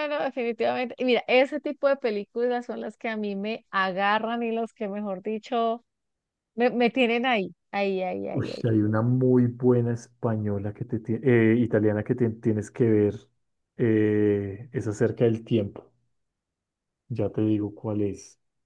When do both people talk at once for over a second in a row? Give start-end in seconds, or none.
none